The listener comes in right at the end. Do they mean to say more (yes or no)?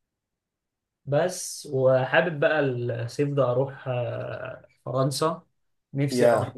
no